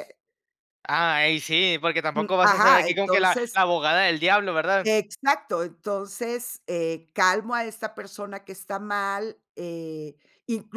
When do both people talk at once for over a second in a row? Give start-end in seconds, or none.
2.2-3.6